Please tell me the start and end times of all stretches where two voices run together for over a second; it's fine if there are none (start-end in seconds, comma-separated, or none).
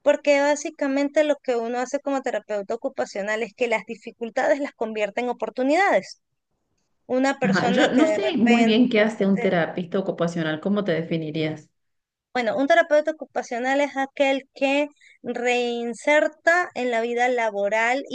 7.4-8.8